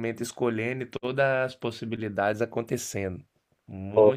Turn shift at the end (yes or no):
yes